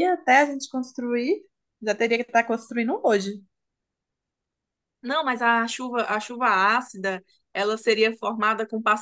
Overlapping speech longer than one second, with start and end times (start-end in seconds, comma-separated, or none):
none